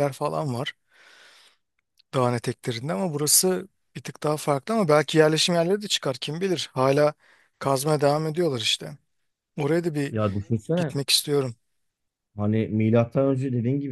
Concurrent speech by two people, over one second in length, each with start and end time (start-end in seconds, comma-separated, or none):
none